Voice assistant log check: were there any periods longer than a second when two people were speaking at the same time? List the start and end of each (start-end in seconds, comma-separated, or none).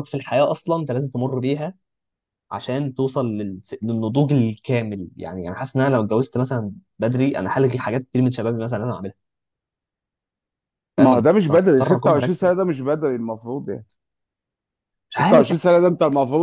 11.0-12.7